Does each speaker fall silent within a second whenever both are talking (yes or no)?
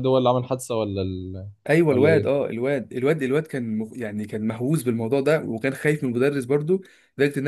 yes